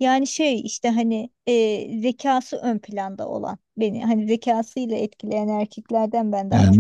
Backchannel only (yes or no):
no